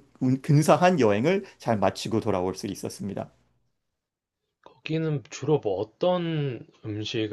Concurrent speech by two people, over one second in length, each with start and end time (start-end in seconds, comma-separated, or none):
none